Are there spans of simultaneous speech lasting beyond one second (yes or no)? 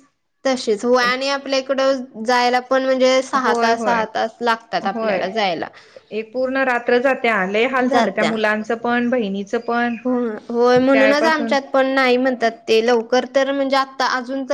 no